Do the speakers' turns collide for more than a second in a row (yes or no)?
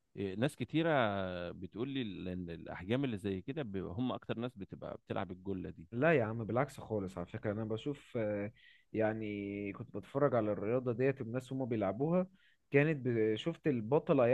no